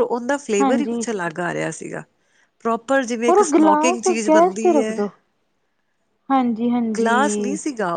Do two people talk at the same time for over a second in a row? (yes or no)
yes